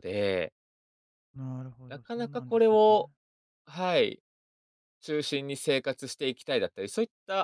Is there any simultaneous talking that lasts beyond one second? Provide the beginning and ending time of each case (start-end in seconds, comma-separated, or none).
1.9-3.1